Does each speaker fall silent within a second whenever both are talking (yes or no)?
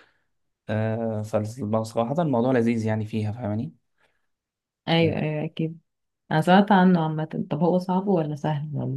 yes